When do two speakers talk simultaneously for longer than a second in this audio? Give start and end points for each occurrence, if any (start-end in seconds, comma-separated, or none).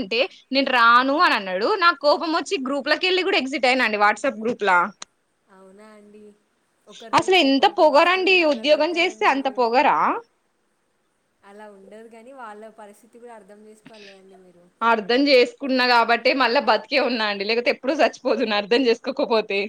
7.2-9.6